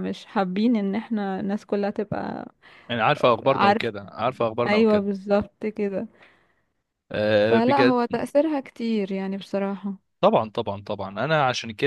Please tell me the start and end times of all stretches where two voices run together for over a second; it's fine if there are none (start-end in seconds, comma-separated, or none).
none